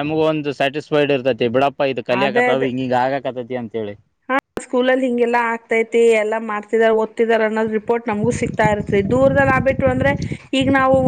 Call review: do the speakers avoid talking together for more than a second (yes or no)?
yes